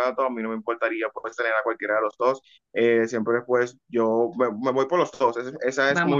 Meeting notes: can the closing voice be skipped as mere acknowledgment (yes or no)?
no